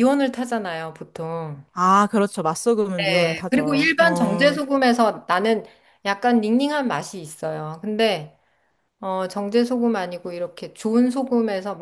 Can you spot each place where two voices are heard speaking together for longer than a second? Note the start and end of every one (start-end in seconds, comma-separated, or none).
3.0-4.6